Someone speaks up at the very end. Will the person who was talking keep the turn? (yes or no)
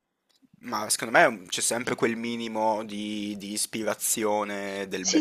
no